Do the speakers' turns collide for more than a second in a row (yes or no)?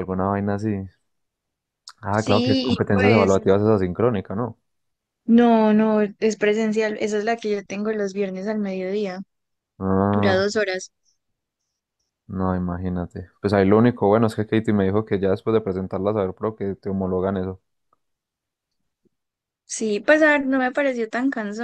yes